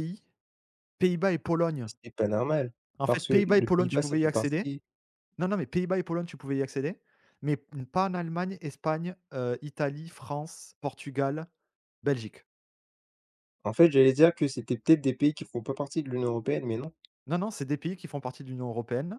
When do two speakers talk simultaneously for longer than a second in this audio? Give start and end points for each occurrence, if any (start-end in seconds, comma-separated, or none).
3.0-4.7